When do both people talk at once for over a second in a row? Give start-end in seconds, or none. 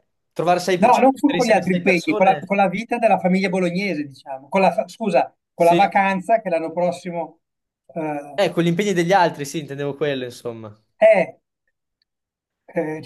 0.8-2.5